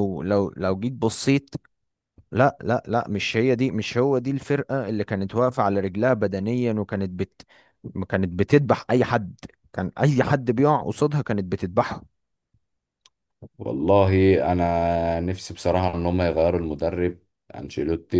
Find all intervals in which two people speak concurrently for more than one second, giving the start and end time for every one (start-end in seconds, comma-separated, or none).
none